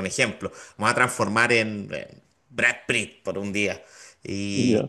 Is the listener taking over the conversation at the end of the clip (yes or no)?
no